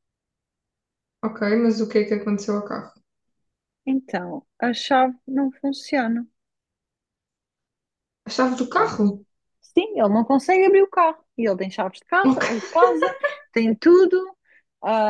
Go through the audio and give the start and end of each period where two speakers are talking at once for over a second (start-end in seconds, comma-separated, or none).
none